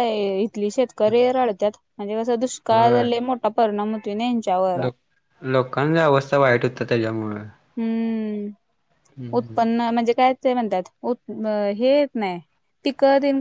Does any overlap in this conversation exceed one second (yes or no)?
no